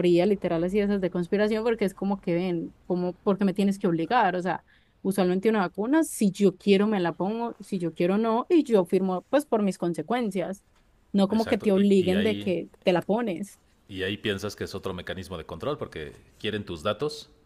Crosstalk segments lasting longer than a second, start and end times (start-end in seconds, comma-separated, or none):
11.3-12.6